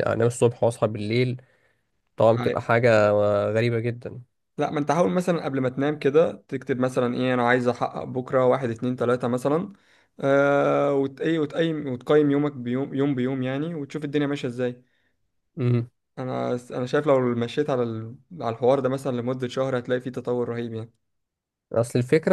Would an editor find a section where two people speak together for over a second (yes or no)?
no